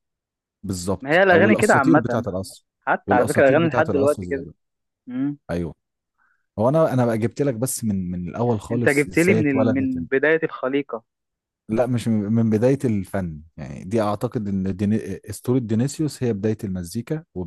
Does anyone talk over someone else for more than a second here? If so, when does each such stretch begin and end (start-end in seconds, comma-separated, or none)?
1.0-2.3, 3.0-4.5, 8.7-10.0